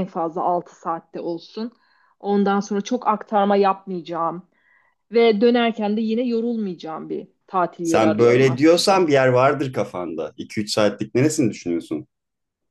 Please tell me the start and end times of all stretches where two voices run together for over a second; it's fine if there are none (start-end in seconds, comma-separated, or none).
7.8-9.1